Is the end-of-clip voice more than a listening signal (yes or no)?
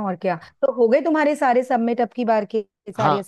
yes